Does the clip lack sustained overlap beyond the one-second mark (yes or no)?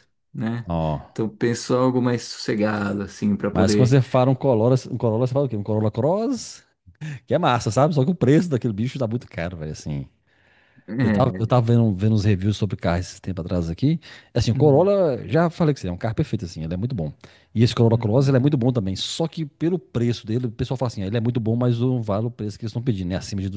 yes